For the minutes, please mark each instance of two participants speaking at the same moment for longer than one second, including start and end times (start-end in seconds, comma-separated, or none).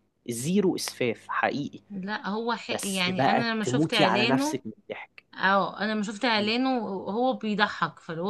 2.7-4.6